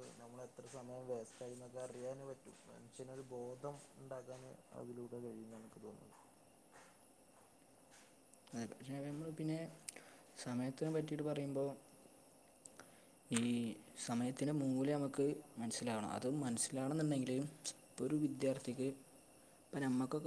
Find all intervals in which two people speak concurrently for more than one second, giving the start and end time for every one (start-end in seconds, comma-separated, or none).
none